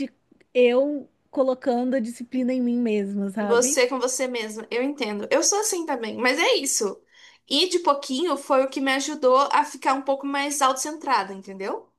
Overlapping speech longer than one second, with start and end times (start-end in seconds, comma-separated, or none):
none